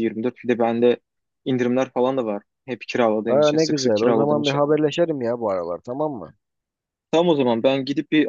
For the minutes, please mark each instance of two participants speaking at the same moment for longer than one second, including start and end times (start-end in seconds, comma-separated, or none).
3.3-4.6